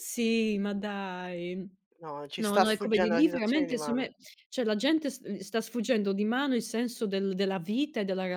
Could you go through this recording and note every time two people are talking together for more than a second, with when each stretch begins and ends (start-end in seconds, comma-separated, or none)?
2.4-4.1